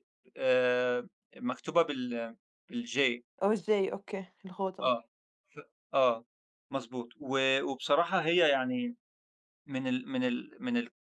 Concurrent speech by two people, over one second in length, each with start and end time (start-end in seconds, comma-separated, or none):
none